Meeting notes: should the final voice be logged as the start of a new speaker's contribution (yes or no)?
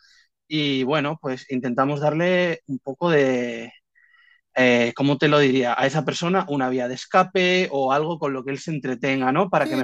yes